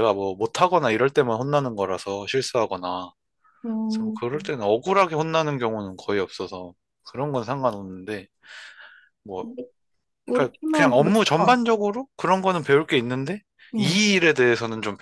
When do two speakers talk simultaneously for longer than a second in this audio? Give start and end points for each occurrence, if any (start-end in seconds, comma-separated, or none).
10.3-11.6